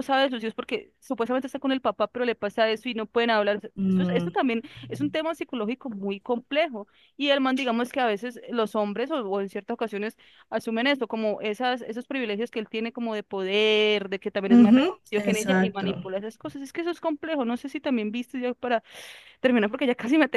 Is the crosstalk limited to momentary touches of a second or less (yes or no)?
no